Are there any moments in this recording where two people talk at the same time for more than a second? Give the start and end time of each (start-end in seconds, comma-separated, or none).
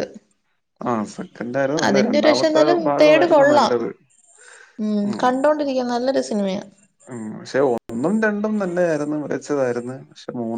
1.9-3.7